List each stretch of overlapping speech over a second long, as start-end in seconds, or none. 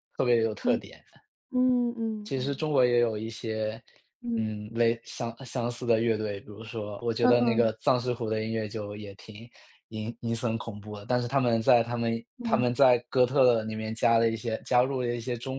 none